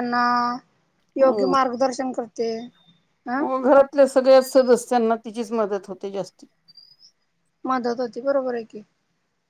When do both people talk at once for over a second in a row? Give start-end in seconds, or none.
none